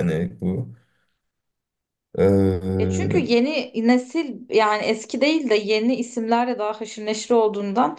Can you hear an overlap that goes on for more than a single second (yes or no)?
no